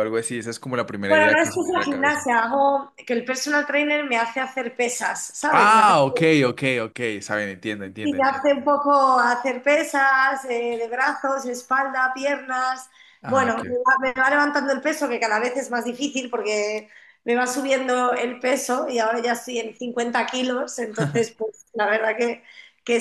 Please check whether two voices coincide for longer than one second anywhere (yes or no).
yes